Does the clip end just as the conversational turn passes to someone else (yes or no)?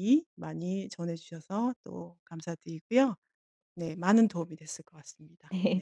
yes